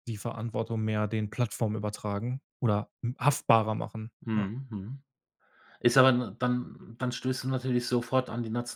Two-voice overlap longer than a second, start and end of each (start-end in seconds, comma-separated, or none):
none